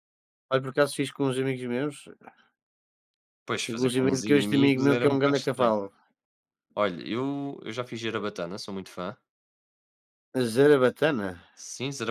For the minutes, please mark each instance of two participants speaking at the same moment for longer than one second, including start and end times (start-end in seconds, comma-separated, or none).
3.7-5.7